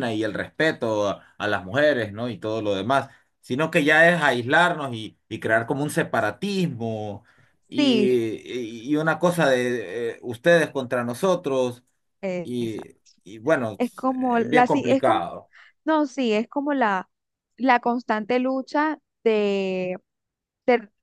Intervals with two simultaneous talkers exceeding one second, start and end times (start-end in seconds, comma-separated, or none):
13.8-15.2